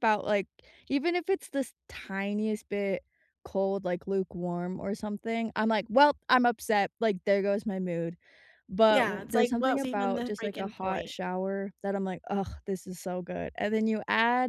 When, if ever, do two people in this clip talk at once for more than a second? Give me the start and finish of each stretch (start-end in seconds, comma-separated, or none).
8.9-11.1